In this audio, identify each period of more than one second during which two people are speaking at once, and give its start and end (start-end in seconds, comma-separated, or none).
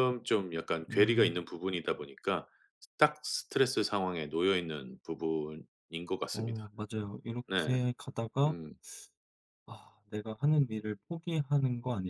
none